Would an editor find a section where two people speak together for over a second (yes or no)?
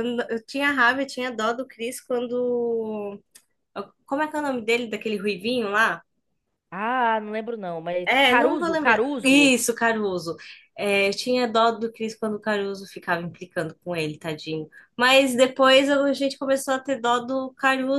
yes